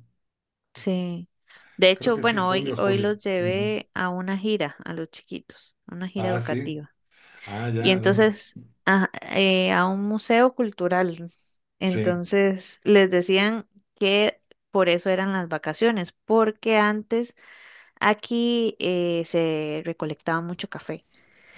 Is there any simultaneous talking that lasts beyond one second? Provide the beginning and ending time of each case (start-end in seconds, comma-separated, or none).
2.0-3.7